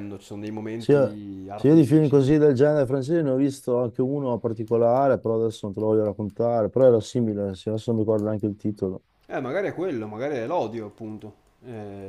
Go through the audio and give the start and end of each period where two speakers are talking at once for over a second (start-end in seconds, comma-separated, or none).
0.8-2.2